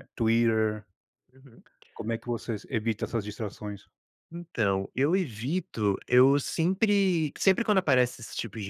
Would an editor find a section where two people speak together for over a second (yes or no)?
no